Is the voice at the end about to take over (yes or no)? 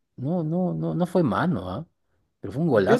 yes